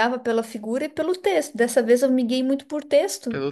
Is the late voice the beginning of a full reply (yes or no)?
no